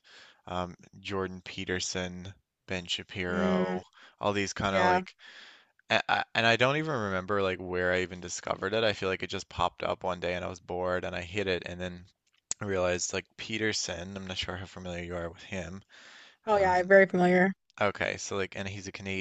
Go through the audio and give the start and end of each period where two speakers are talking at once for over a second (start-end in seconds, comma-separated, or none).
none